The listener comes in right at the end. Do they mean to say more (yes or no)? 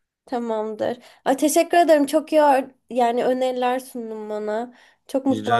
yes